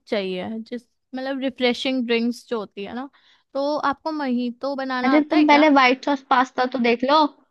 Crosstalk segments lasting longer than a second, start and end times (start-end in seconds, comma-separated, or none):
none